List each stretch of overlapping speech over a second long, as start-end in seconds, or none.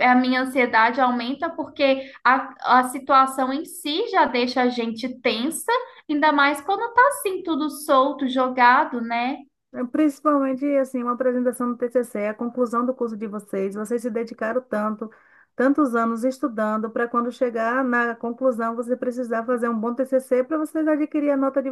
none